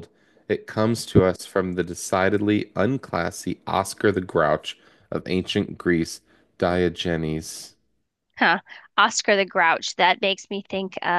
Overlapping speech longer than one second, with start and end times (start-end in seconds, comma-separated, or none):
none